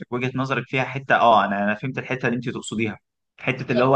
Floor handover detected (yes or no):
no